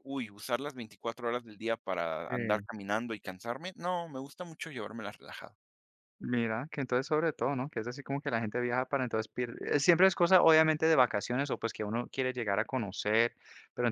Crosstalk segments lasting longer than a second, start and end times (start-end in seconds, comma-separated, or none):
none